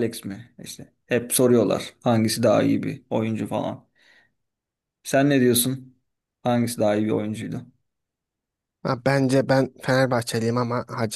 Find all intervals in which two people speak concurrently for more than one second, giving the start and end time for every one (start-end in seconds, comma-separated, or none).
none